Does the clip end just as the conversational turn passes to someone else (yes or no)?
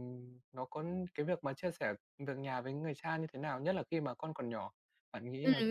yes